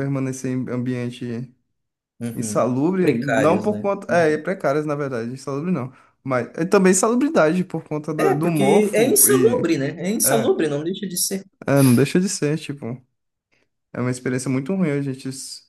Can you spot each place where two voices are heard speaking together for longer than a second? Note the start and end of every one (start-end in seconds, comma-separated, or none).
2.4-4.4, 8.2-9.6